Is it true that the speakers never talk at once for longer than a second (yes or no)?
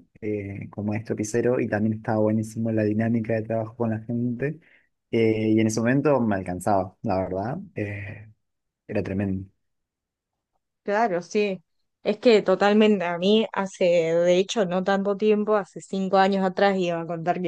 yes